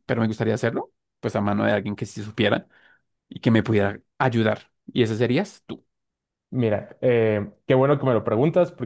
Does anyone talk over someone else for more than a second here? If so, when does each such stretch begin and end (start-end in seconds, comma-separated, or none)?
none